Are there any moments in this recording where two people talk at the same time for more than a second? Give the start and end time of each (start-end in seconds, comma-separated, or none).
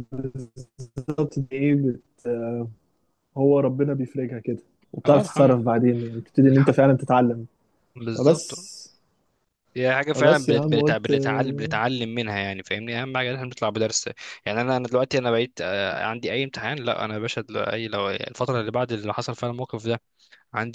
10.1-11.7